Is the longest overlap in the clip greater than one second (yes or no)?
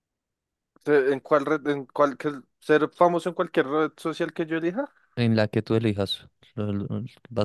no